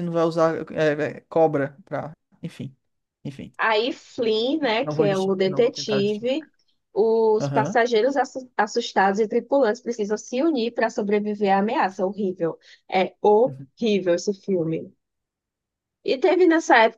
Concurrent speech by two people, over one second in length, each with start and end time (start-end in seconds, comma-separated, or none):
4.8-6.5